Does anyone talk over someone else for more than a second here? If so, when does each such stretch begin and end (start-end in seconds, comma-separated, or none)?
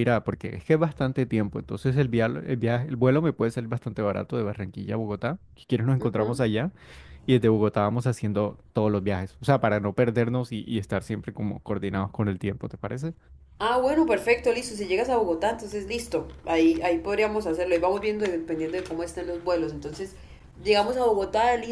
none